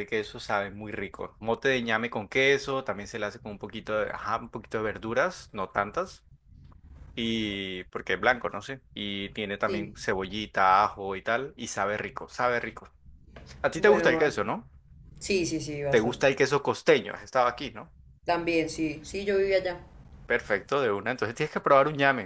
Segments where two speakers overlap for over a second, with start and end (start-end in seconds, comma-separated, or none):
none